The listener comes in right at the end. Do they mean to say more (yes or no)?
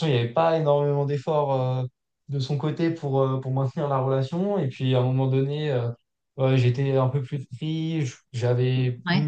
no